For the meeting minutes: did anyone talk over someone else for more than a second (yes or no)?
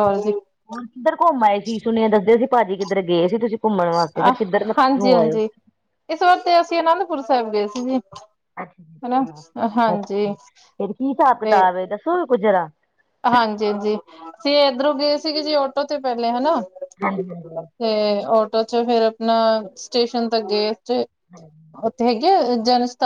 no